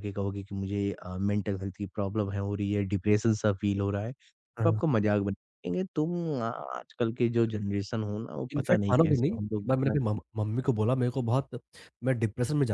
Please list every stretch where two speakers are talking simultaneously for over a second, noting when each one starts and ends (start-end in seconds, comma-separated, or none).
8.6-9.9